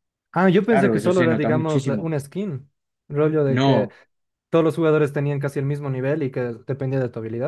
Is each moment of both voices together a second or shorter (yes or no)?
no